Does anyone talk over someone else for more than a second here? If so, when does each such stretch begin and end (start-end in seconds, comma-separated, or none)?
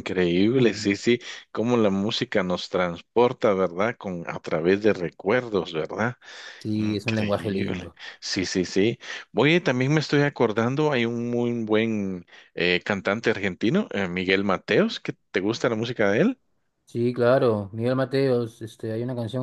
6.7-8.0